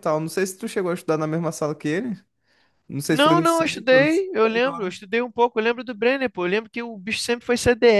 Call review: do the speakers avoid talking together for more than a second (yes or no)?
no